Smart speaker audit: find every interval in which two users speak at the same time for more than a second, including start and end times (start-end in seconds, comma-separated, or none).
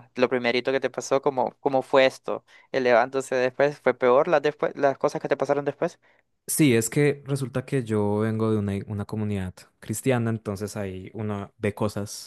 none